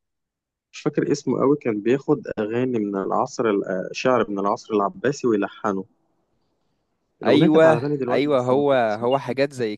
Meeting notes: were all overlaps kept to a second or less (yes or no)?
no